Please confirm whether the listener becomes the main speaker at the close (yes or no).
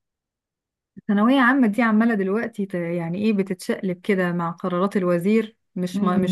no